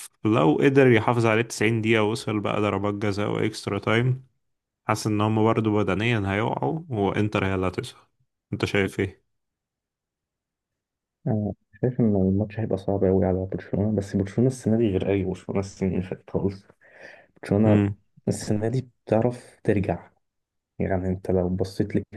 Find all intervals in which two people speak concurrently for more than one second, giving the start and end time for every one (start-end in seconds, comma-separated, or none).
none